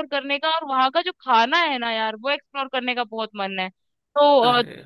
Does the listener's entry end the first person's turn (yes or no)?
no